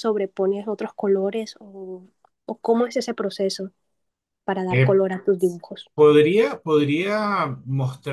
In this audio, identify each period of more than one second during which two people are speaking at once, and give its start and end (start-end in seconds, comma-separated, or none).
none